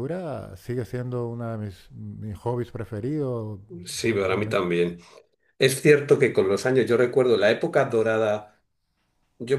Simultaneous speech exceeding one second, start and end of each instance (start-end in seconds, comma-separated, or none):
none